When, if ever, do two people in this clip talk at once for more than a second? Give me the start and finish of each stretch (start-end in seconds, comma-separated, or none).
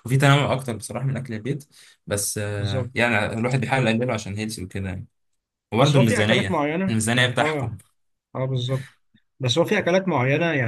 5.8-7.8